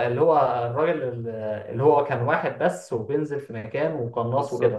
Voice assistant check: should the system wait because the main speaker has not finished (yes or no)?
no